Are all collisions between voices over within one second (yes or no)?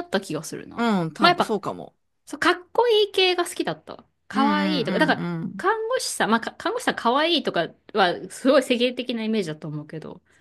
no